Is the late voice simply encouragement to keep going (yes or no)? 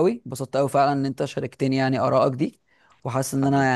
yes